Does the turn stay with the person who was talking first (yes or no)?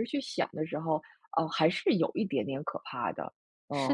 no